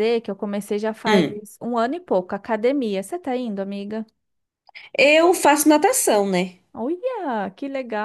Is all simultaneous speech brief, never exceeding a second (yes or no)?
yes